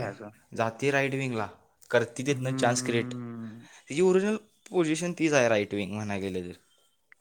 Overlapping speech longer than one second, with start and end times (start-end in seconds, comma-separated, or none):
2.3-3.7